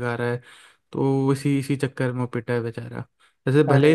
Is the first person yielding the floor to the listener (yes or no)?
no